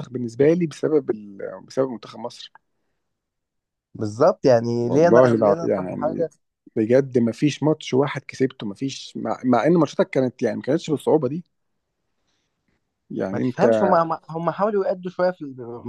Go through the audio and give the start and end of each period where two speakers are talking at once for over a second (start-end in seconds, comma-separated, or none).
4.8-6.3